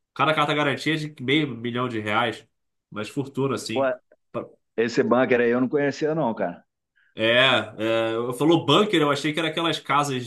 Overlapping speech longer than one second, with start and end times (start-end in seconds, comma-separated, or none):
none